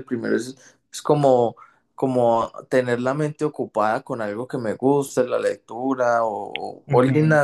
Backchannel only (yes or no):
no